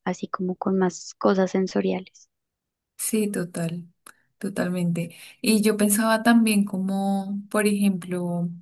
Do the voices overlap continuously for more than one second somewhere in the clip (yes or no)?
no